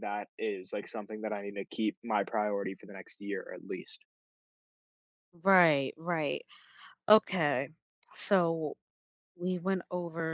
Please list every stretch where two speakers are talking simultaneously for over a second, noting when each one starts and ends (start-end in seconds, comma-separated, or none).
none